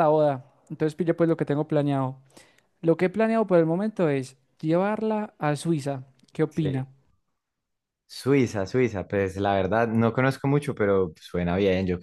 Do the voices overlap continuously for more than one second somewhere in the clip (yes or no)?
no